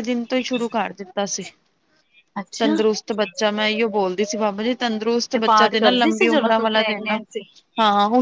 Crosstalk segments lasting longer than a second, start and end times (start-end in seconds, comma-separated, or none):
5.3-7.2